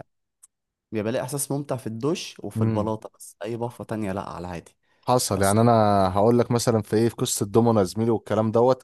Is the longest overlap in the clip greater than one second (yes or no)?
no